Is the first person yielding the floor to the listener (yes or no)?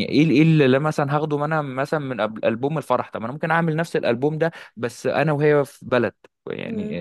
no